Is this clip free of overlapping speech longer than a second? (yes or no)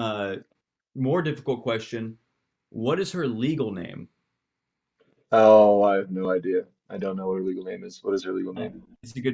yes